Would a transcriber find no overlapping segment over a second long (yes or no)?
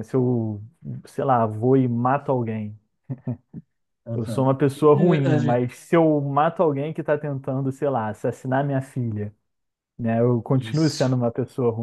no